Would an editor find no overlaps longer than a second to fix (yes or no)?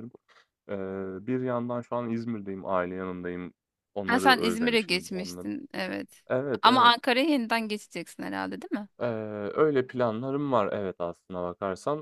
no